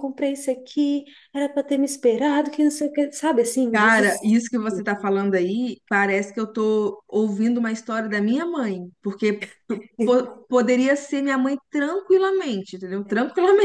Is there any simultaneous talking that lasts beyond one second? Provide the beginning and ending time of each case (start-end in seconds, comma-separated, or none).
none